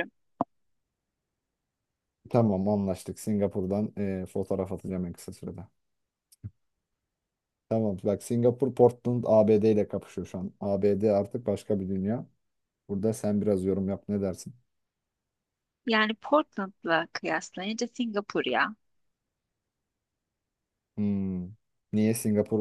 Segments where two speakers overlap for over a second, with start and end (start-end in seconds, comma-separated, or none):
none